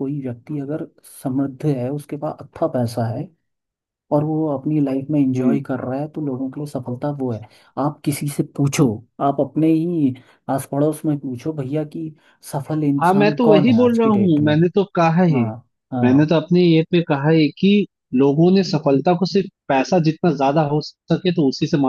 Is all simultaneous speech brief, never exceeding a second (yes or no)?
no